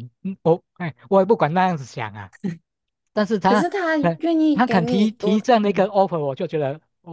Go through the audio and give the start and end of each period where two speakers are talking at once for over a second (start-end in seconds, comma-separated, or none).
3.5-5.9